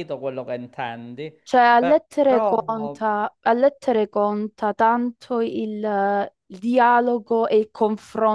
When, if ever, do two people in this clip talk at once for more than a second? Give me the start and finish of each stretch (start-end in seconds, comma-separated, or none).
1.8-3.0